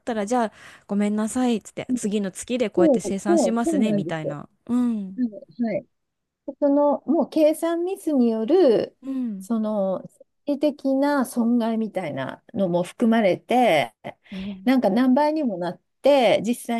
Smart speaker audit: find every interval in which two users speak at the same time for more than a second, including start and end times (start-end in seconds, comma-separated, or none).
2.8-4.4